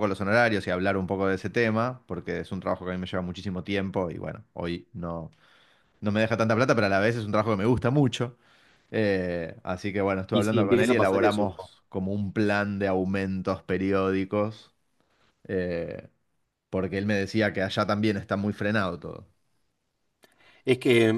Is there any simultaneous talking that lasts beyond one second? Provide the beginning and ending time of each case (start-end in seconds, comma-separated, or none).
10.3-11.5